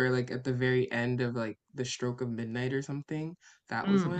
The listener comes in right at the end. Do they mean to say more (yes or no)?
yes